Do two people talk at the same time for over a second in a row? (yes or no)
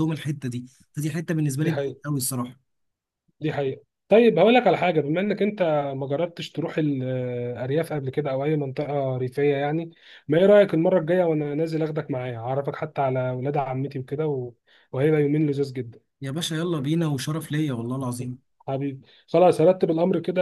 no